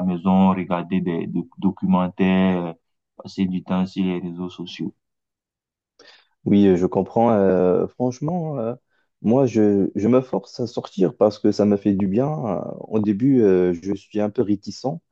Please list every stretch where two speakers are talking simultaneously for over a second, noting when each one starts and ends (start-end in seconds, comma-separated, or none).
none